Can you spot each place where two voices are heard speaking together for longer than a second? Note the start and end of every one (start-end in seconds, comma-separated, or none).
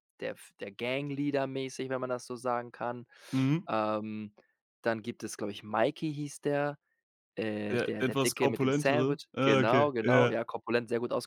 7.7-10.3